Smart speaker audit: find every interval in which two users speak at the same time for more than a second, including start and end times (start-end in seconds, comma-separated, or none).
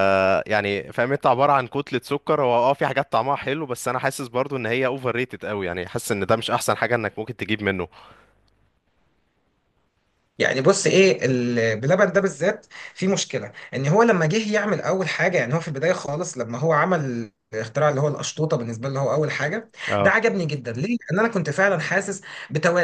none